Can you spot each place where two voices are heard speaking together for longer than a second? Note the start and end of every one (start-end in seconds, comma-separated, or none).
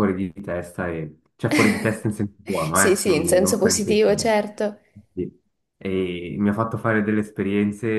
2.7-4.3